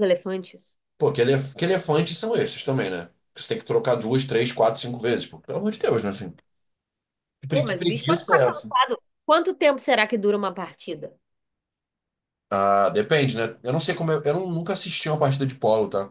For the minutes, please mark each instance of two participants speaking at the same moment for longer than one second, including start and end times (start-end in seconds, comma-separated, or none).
7.5-8.7